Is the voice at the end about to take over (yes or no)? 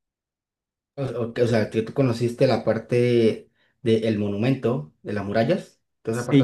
yes